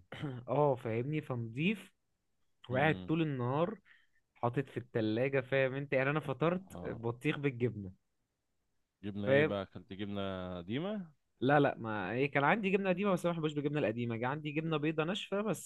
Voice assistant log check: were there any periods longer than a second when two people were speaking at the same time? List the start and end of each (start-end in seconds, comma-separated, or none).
none